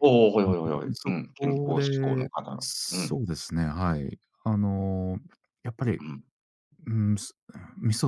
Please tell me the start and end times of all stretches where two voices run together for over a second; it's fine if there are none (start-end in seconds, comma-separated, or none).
0.9-3.2